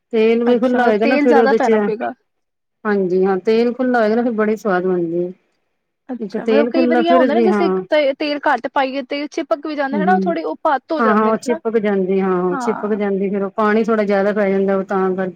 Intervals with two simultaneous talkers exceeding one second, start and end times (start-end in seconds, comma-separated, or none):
0.5-1.8